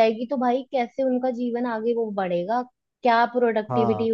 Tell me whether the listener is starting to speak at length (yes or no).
no